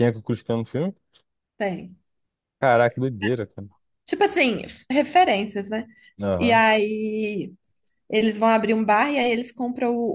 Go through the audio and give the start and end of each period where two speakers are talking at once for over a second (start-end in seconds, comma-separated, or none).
none